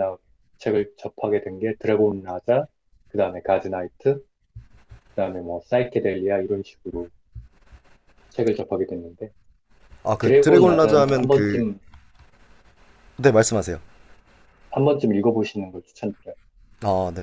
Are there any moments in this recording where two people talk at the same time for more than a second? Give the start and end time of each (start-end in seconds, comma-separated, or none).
10.2-11.6